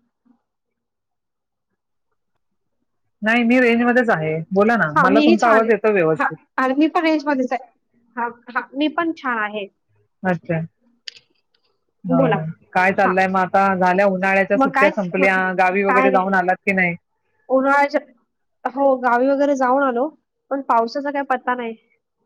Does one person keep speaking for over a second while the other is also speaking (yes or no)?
yes